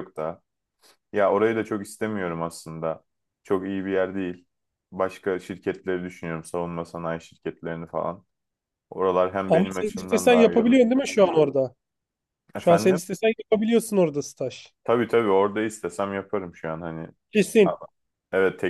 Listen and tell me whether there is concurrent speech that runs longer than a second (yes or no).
yes